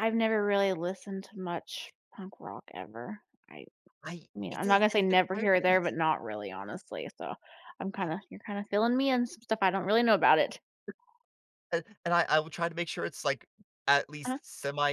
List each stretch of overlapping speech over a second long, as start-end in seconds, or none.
4.3-5.9